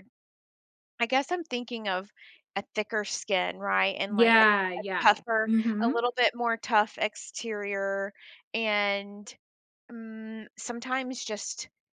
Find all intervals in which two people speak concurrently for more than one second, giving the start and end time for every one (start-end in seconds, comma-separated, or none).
4.1-6.0